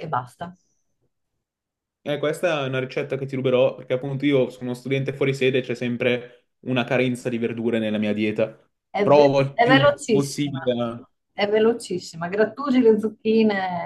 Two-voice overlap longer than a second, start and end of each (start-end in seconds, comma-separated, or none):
9.0-10.6